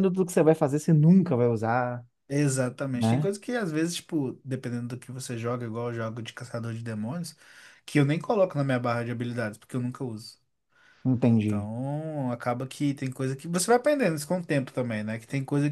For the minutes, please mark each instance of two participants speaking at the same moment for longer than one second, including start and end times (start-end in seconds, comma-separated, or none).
none